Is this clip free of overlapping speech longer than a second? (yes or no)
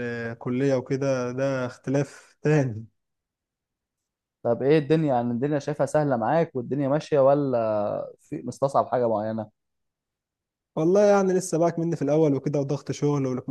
yes